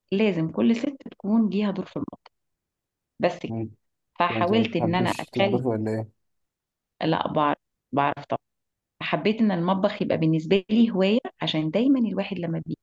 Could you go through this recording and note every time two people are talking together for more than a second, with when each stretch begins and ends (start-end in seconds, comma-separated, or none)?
4.3-5.6